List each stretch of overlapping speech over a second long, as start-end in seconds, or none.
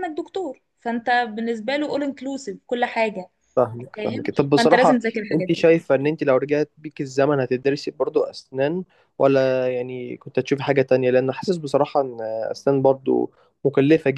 4.0-5.7